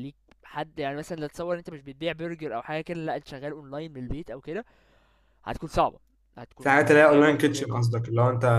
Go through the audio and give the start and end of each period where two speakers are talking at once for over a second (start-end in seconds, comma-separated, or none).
6.6-7.9